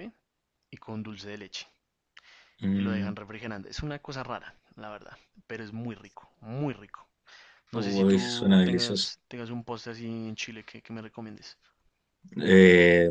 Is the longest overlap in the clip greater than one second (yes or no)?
yes